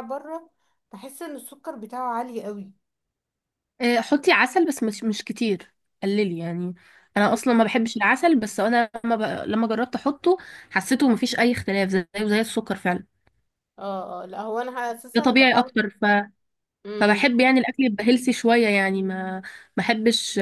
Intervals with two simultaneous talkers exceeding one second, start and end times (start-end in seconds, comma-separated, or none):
none